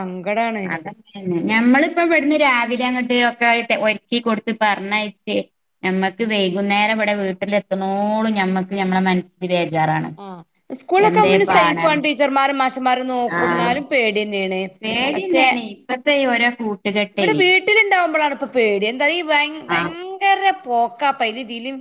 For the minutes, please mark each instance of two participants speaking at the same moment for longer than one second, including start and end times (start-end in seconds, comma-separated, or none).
none